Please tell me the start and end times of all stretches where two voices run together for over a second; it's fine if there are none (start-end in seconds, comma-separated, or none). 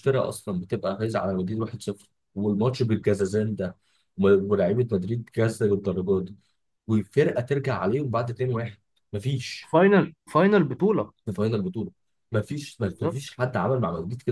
none